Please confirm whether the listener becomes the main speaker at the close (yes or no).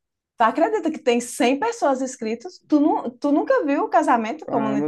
yes